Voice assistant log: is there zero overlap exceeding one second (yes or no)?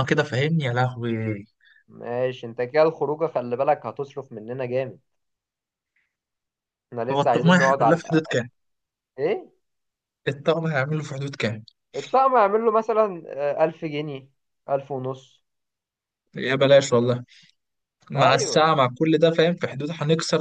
no